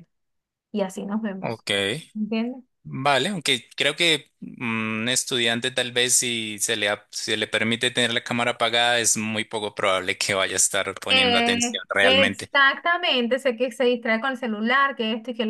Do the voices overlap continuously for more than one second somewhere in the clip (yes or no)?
yes